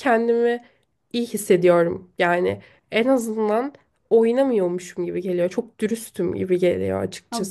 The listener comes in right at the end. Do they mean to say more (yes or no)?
yes